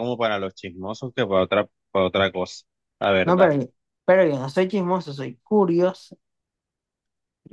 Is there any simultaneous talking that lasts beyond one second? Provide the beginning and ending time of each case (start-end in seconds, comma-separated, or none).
none